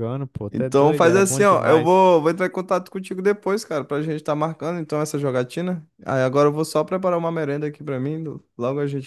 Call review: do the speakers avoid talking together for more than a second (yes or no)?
no